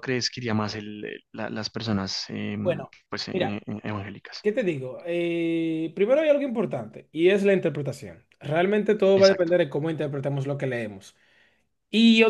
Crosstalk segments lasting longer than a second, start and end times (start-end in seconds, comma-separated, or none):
none